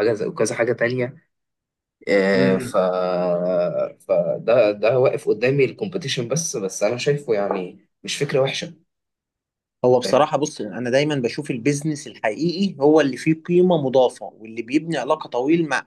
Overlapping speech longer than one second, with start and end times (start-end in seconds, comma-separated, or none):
none